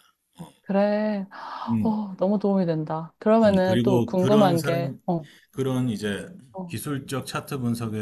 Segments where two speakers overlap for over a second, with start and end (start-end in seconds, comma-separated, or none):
3.4-5.0